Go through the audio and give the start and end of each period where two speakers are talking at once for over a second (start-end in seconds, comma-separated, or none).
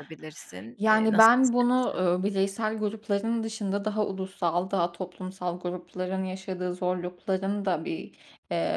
0.8-2.0